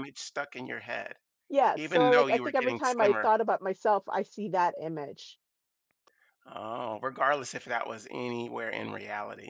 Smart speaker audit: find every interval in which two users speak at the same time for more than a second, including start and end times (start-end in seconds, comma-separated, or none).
1.7-3.2